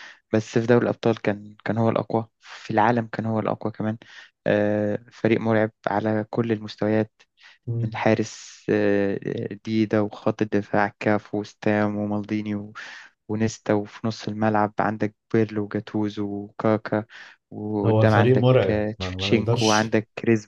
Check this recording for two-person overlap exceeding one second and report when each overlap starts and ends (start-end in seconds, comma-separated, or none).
17.9-19.9